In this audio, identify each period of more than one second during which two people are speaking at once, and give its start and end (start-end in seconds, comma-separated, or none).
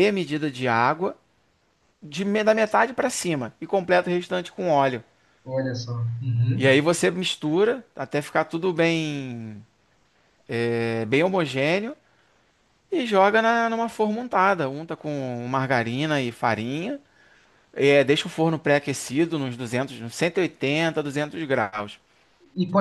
none